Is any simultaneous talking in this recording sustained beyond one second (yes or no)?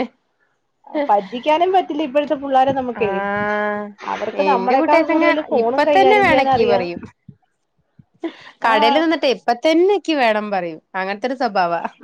yes